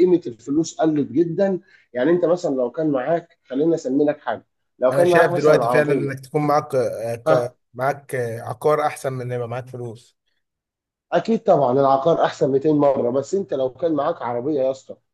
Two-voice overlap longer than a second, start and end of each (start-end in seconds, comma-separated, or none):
4.9-6.2